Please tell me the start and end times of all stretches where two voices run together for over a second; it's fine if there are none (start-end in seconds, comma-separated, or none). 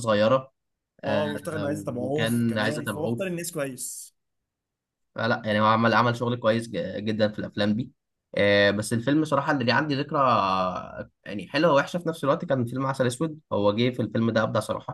2.0-3.3